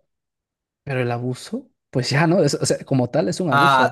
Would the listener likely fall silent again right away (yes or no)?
no